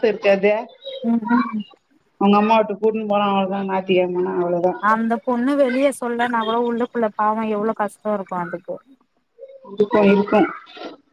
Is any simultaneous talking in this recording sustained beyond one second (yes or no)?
no